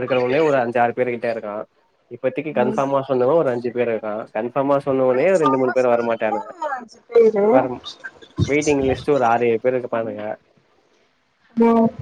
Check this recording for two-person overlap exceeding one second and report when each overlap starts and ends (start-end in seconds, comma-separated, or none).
5.1-6.5